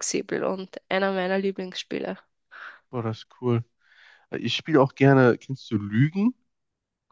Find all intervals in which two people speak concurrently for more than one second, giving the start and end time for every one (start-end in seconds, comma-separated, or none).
none